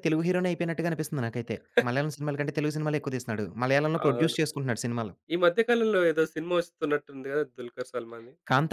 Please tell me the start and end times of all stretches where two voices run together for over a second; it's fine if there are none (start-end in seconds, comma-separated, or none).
none